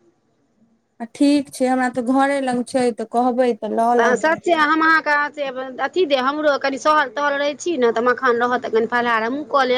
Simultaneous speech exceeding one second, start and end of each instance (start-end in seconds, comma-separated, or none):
none